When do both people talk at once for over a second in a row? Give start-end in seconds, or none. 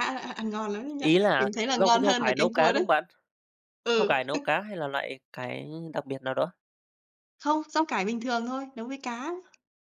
1.1-2.9